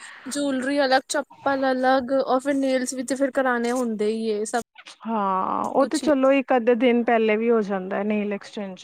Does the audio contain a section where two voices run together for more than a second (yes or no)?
no